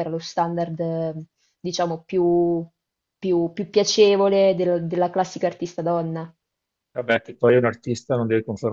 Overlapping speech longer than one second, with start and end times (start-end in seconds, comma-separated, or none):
none